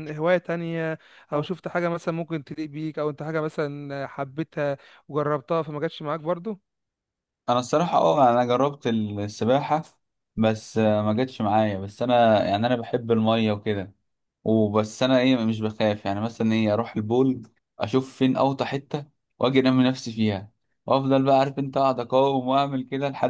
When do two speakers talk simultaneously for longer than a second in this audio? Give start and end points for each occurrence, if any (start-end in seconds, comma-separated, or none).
none